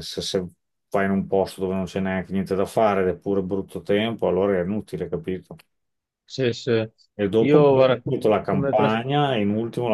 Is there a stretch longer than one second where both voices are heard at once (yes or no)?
yes